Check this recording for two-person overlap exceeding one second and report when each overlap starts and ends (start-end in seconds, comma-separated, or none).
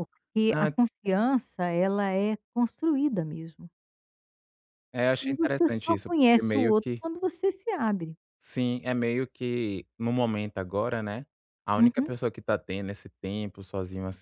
5.2-7.0